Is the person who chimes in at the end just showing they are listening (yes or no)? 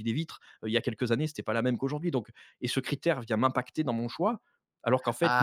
no